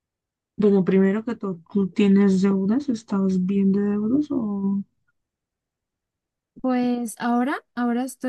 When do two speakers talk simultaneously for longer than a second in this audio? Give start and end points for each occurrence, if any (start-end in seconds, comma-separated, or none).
none